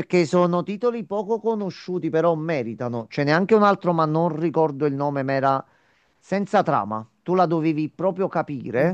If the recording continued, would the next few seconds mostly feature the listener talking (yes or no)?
no